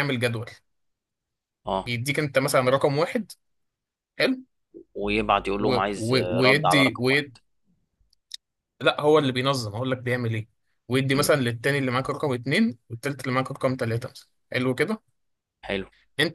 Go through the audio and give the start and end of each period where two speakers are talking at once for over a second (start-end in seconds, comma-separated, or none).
5.7-7.3